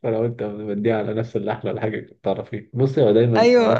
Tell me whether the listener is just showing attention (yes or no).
yes